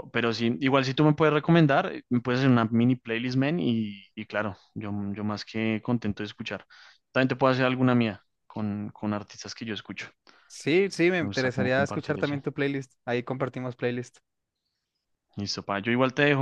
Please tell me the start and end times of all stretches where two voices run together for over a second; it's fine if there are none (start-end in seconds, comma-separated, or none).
11.2-12.4